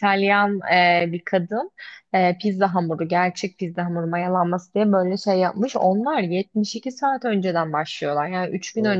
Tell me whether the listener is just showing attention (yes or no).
yes